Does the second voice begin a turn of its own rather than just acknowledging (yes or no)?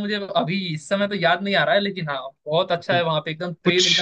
no